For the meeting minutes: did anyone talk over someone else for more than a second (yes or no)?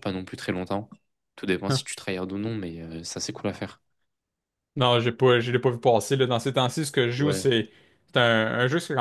no